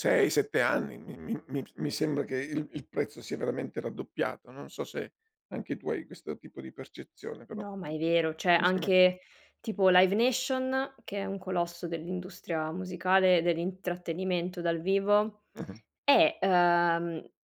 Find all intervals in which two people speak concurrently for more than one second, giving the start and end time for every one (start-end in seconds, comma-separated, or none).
none